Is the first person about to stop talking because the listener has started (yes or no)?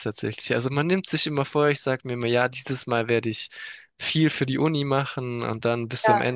no